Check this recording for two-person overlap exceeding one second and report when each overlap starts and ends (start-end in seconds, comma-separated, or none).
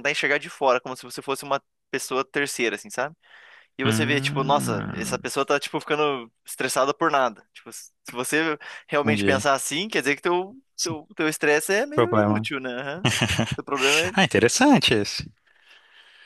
3.8-5.3